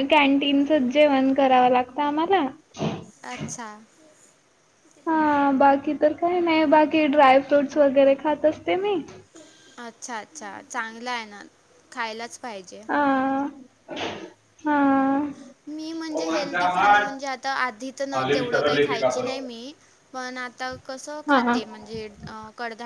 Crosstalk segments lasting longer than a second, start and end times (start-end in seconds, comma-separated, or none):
none